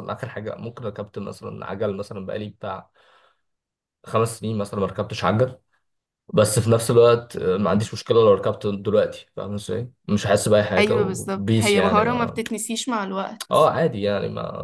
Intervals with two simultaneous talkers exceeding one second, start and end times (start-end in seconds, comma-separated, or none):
10.8-12.4